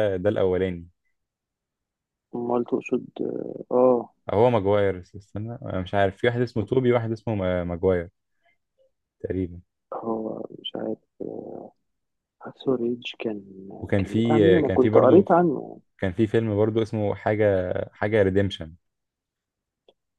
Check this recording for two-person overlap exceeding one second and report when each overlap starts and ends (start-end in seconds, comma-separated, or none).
14.0-15.3